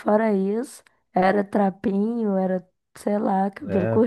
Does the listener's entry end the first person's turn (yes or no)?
yes